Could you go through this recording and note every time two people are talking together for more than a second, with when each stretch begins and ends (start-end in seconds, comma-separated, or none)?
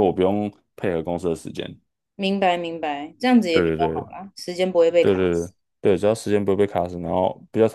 none